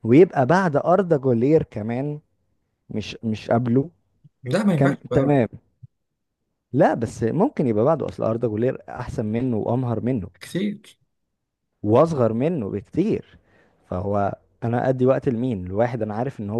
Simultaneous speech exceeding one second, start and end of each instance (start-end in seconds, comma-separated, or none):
none